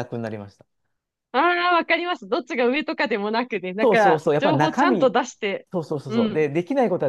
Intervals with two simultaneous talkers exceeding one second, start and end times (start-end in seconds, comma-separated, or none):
3.8-5.2